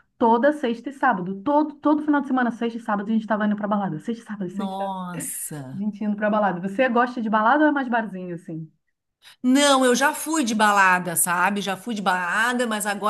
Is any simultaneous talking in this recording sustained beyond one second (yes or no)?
no